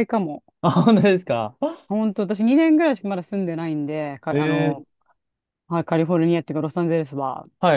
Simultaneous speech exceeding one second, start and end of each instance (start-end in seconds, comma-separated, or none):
none